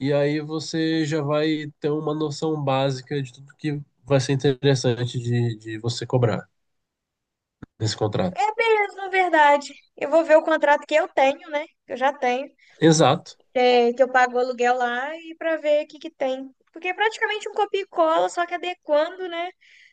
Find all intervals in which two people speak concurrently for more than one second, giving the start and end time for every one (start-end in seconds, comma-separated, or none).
none